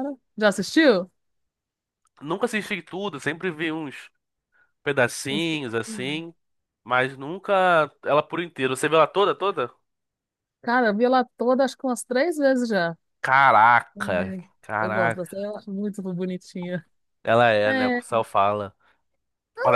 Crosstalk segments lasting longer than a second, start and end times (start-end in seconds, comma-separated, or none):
13.9-15.5